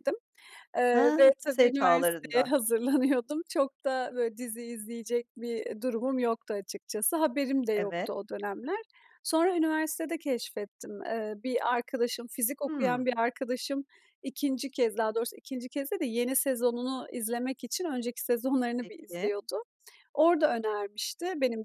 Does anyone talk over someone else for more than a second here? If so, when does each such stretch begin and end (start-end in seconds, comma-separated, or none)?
0.9-2.5